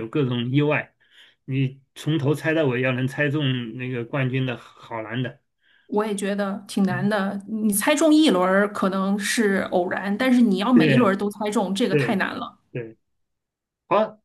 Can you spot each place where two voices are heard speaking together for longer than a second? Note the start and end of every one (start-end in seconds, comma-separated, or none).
none